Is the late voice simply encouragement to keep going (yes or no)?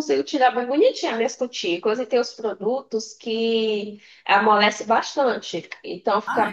yes